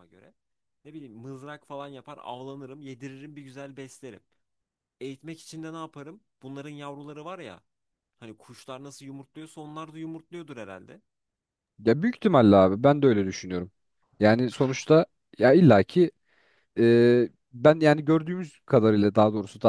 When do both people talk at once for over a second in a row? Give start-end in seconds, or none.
none